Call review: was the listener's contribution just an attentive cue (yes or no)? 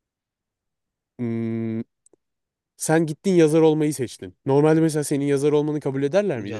no